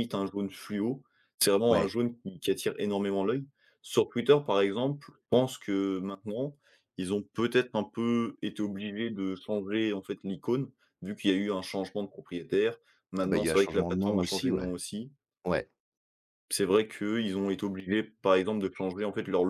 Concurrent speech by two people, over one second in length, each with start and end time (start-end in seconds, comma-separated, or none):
13.2-14.7